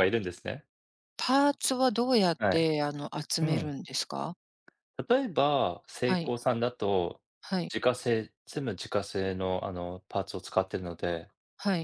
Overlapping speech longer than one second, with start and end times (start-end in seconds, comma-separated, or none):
none